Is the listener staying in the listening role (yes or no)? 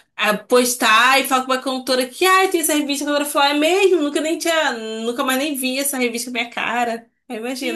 no